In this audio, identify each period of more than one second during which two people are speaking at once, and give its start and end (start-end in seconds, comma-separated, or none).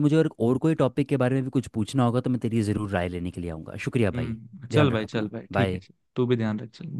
4.1-5.8